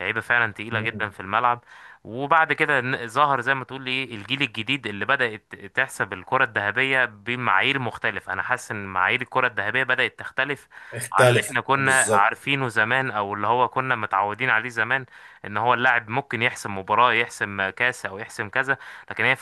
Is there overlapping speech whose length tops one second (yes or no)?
yes